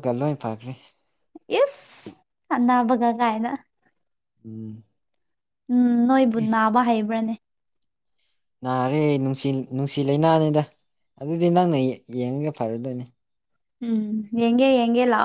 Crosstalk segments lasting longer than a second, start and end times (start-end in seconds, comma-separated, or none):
none